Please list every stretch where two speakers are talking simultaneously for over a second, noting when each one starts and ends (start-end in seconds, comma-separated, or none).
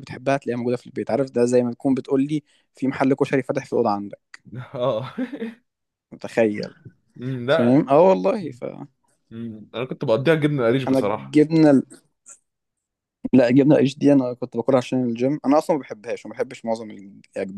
none